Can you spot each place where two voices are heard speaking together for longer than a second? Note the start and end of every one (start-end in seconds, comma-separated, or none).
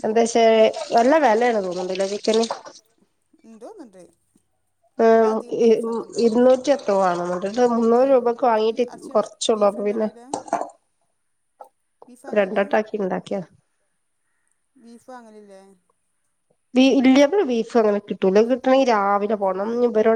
8.0-10.1